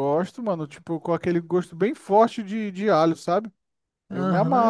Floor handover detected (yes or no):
yes